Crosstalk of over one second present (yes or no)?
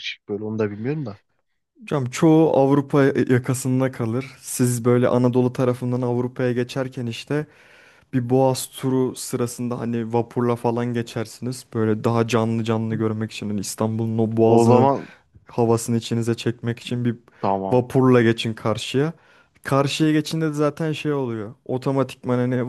no